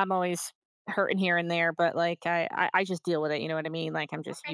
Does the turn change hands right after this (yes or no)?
yes